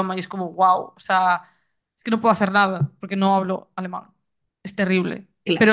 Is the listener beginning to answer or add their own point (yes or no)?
no